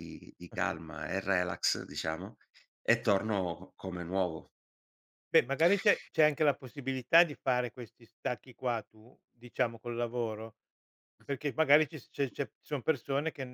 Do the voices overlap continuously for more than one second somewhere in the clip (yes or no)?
no